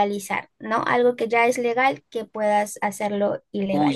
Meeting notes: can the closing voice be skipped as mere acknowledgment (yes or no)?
no